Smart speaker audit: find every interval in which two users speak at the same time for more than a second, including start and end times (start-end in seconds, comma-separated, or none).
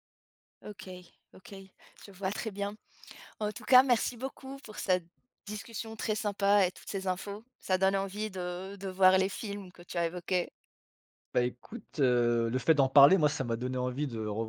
none